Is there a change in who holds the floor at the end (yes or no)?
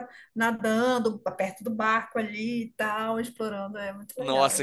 yes